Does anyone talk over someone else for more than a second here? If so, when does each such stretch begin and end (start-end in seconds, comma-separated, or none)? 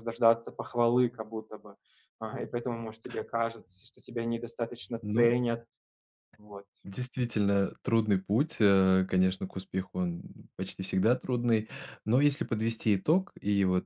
none